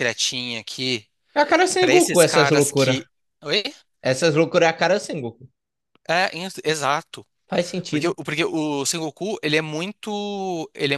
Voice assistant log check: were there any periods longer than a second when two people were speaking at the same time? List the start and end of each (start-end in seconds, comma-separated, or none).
1.8-3.0